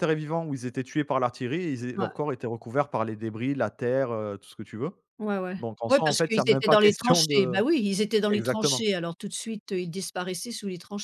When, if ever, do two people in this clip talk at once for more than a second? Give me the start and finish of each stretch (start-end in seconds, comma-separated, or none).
5.6-7.6